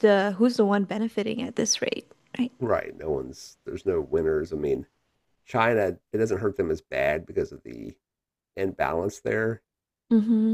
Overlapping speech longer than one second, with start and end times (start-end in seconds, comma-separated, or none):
none